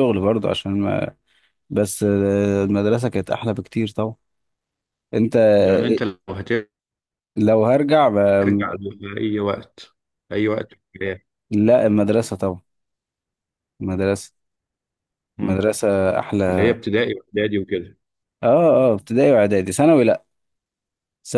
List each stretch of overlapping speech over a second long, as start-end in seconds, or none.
none